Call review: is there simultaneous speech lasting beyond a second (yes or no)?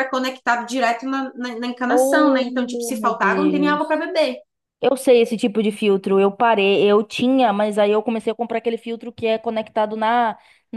yes